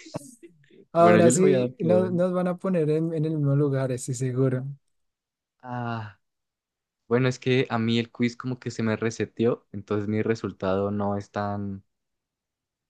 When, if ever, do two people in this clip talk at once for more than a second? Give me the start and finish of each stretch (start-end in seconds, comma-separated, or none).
1.0-2.2